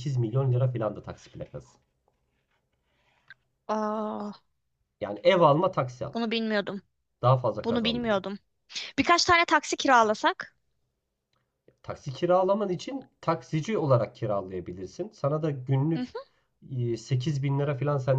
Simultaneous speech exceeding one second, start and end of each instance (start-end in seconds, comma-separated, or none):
none